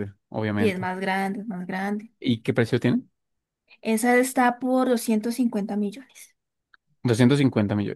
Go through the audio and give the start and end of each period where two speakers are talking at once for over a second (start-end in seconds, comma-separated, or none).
none